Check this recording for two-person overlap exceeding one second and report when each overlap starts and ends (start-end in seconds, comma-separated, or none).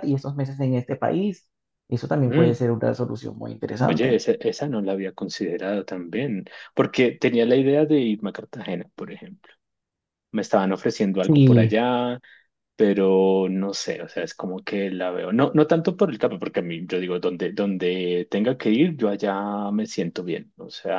none